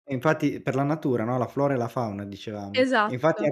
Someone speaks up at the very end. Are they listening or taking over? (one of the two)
listening